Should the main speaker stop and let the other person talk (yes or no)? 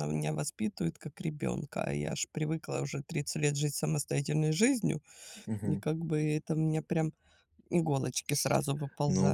yes